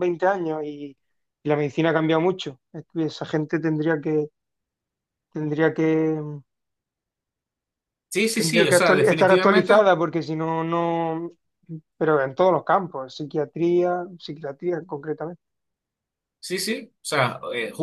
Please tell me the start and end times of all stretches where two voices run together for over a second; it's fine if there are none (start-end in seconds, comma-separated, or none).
8.3-9.9